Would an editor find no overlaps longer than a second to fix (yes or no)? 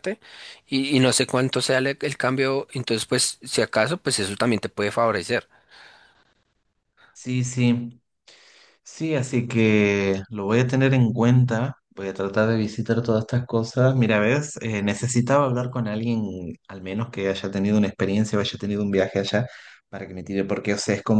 yes